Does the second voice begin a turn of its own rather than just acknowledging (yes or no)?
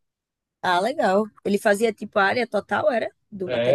yes